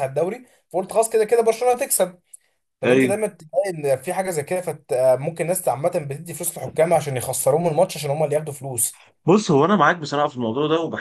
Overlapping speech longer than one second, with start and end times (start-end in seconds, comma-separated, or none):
none